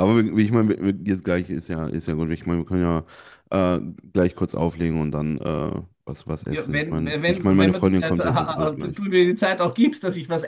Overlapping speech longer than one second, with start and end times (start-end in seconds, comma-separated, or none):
6.5-9.1